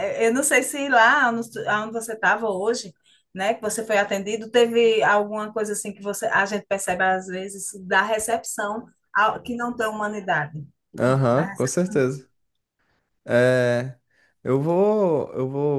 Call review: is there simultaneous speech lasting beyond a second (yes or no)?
no